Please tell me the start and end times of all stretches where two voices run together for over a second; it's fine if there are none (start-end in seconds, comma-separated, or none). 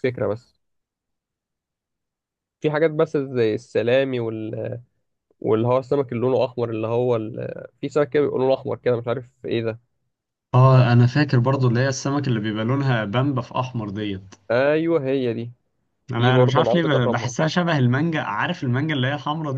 16.1-17.3